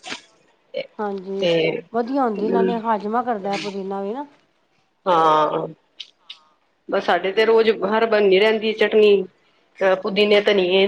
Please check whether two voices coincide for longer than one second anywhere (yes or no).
no